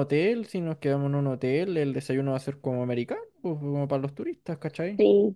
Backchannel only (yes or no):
yes